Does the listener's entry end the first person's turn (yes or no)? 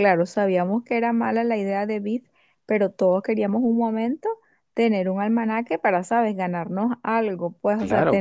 yes